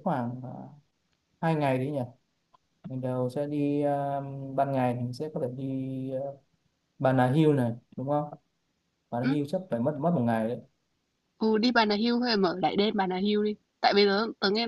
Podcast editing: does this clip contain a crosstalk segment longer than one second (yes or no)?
no